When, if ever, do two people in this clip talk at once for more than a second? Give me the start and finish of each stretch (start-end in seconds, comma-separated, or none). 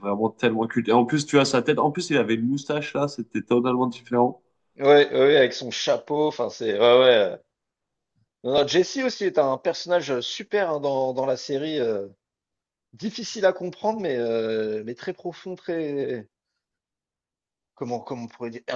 none